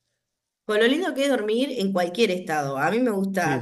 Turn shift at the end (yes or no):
no